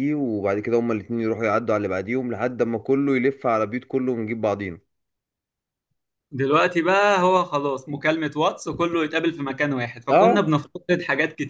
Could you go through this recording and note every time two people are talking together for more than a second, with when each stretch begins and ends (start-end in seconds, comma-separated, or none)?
none